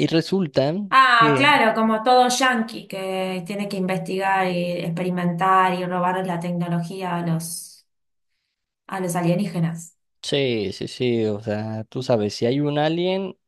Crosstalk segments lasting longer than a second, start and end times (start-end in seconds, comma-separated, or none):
none